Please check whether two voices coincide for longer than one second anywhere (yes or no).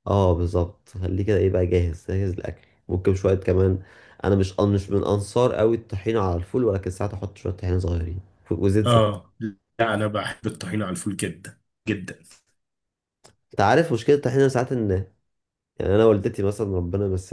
no